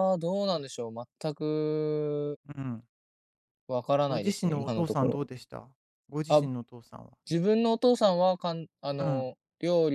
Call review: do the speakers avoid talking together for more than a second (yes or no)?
no